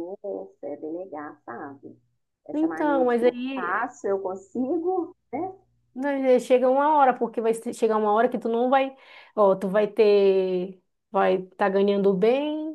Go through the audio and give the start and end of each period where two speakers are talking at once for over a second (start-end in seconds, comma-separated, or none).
2.5-3.9